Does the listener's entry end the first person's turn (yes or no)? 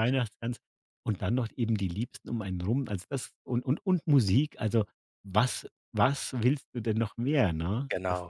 yes